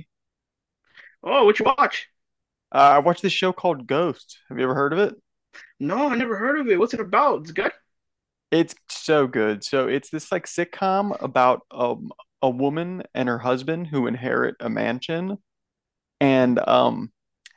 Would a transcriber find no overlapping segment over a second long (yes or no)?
yes